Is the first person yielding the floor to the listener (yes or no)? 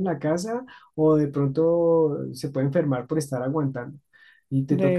no